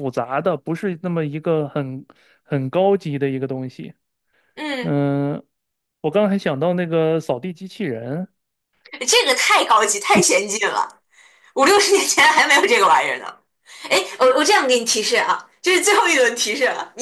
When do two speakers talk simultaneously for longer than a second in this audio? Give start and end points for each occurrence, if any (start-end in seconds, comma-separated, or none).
none